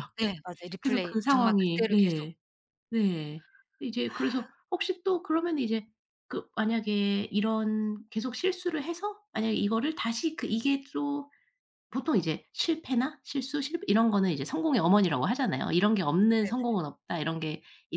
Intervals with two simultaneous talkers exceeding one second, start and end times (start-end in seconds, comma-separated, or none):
0.8-2.3